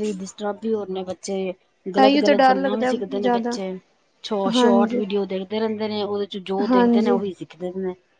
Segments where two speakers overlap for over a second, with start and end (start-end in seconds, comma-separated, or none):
2.0-3.5